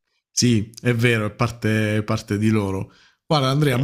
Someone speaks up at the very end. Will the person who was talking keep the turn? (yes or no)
yes